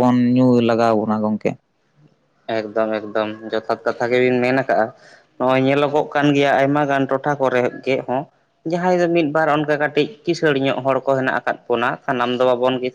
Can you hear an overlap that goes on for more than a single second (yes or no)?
no